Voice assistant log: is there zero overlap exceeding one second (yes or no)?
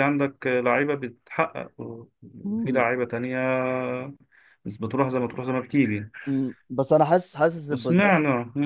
yes